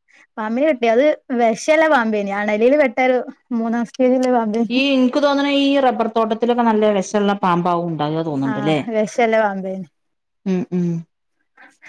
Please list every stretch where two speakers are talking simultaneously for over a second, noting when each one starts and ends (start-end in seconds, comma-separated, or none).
none